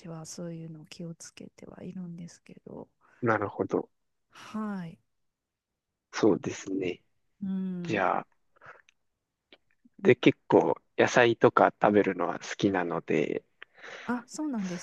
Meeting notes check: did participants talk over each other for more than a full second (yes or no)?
no